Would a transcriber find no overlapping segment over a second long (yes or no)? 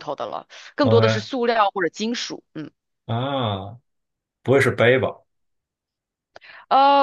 yes